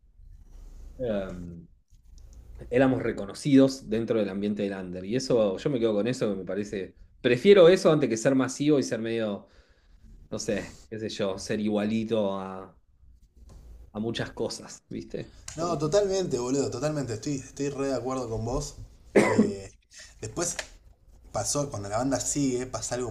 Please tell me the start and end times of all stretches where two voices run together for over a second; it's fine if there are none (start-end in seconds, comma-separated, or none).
none